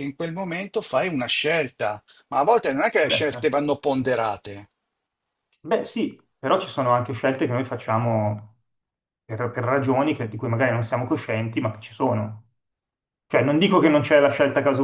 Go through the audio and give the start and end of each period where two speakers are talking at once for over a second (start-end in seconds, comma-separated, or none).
none